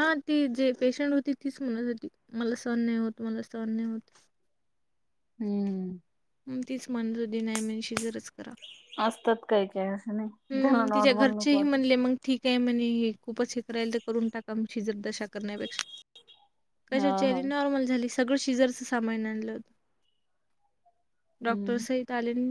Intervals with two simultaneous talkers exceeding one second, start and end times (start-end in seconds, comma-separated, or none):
10.5-11.8